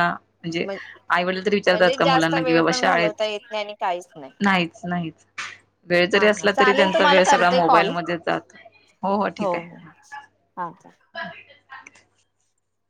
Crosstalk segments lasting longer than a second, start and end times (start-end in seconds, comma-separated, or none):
1.7-3.3, 6.1-7.9